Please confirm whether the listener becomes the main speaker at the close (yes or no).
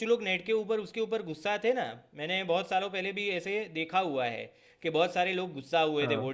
no